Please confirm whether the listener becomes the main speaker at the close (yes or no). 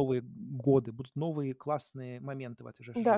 yes